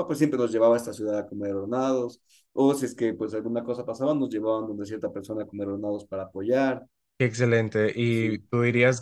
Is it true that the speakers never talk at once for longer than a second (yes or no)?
yes